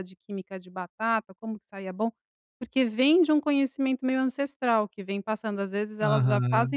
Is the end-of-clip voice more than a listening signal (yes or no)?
no